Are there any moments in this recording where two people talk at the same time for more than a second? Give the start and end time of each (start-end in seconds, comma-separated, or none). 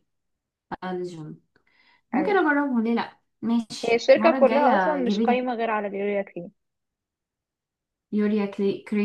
3.8-5.5